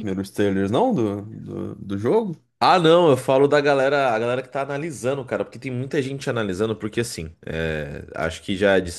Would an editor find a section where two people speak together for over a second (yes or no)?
no